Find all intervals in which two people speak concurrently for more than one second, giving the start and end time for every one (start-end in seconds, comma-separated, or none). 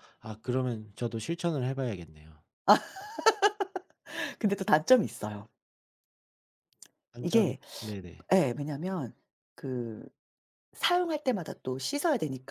none